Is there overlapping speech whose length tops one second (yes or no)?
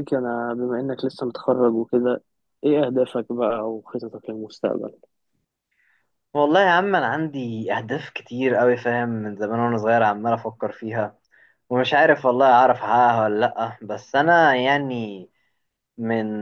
no